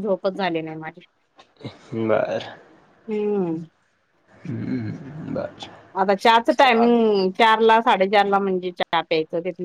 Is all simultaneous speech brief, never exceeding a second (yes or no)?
yes